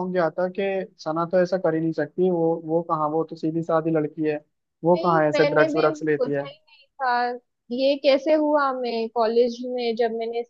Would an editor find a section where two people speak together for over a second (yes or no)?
yes